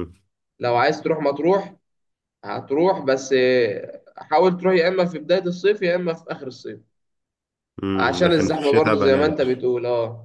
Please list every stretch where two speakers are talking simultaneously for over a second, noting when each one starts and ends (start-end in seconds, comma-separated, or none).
7.9-9.6